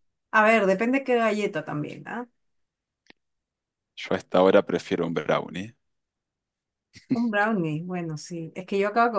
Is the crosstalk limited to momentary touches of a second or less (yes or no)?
yes